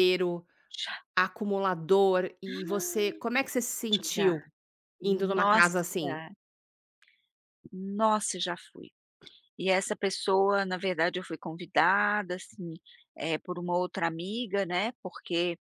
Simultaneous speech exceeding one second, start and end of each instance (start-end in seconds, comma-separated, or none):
5.0-6.2